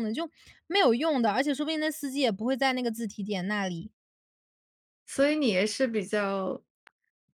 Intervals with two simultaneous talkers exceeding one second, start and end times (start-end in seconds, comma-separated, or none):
none